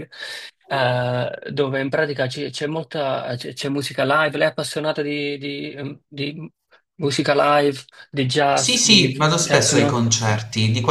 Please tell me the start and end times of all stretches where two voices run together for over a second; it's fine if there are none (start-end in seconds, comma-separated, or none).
8.5-10.0